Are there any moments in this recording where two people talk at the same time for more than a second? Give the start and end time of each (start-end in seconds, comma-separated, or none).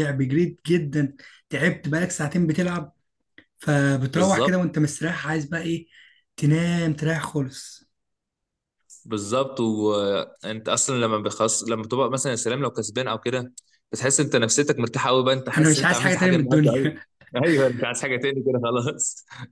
15.6-16.9